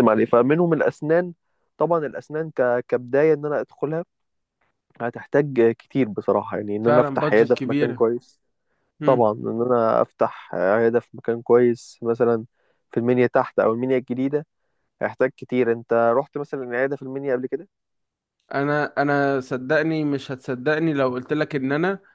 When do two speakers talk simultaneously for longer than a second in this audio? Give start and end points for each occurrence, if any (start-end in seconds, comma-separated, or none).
6.8-8.0